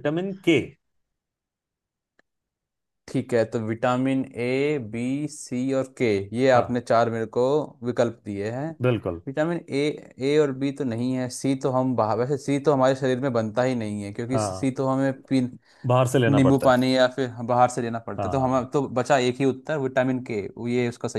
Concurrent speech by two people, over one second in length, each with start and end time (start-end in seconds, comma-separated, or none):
none